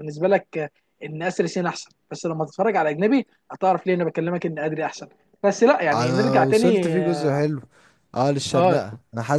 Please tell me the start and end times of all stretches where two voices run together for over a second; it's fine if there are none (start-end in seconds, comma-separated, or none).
5.9-7.4